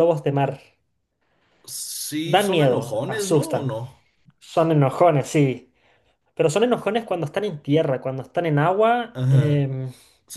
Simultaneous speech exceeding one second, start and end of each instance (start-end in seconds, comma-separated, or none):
2.2-3.7